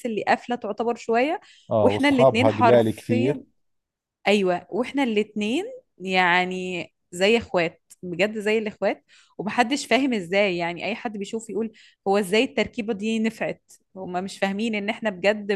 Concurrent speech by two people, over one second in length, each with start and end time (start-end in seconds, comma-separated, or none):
1.8-3.4